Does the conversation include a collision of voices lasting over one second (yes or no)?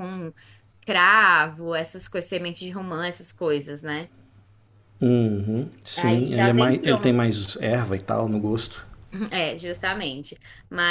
yes